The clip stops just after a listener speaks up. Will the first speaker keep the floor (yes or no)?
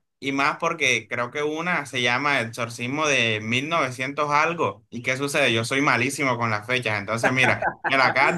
yes